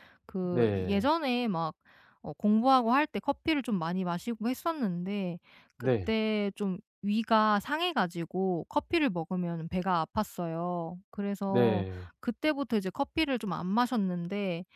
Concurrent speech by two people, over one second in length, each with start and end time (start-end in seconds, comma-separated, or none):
none